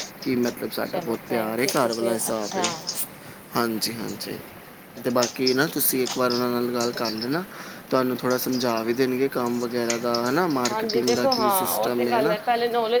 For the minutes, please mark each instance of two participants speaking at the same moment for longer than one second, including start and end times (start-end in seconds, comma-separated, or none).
0.9-2.6, 10.7-12.3